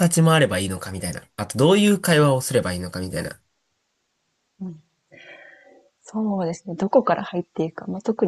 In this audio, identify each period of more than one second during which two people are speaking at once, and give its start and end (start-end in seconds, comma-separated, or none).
none